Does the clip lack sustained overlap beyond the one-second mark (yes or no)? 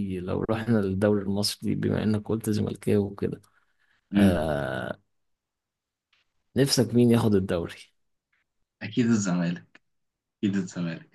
yes